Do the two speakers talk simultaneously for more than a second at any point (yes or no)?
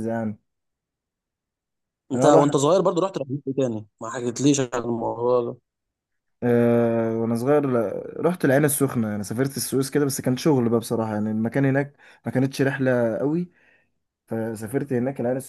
no